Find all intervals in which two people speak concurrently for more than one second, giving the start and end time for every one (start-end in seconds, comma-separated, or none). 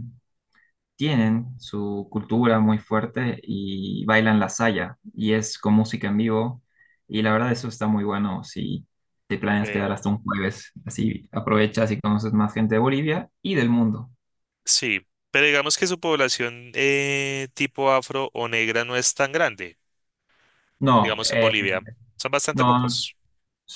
none